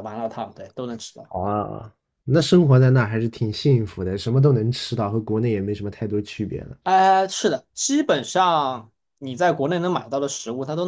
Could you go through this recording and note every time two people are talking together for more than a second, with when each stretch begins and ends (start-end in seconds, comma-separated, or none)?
none